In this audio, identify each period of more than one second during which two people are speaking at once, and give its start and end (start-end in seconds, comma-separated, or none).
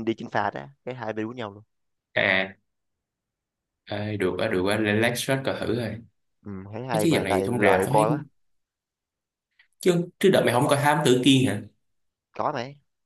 6.9-8.2